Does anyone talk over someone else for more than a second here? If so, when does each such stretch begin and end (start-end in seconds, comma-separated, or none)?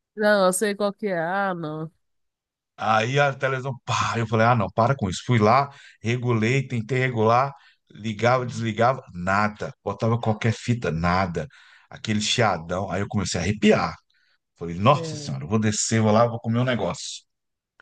none